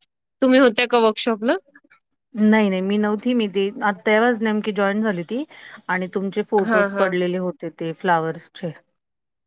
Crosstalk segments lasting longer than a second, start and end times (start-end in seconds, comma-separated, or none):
none